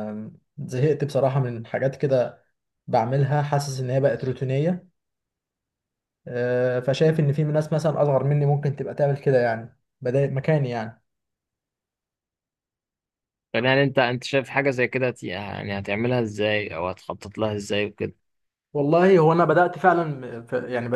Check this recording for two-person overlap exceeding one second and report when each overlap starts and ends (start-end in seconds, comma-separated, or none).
none